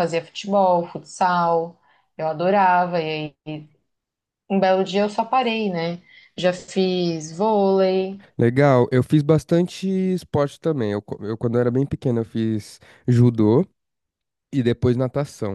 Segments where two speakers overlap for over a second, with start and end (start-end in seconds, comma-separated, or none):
none